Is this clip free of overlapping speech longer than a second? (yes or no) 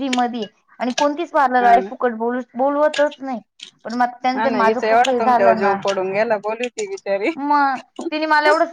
no